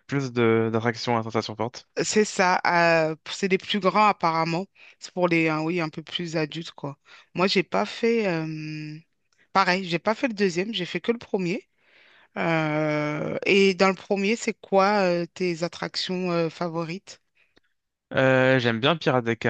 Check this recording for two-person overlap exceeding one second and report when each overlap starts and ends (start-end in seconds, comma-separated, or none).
none